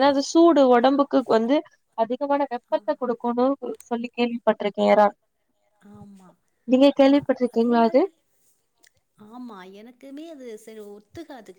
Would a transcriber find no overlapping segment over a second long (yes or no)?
yes